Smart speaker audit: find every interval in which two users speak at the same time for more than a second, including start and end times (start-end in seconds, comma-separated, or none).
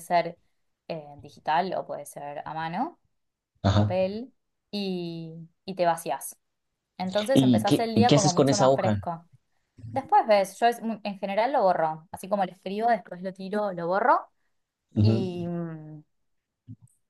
7.3-9.0